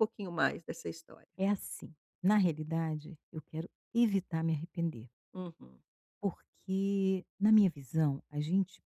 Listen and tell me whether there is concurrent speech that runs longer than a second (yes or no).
no